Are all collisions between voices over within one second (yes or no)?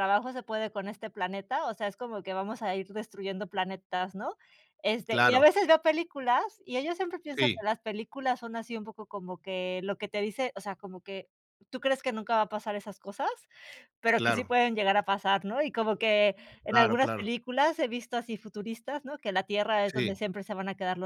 yes